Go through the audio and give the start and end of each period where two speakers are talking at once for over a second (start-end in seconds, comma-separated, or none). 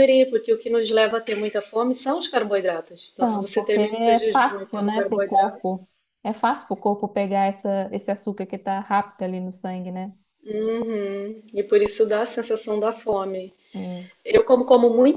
3.2-5.6